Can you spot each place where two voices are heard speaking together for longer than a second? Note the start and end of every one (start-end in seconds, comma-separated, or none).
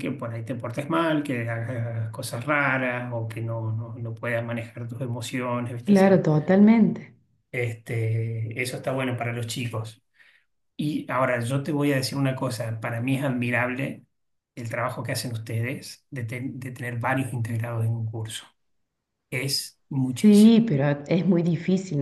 none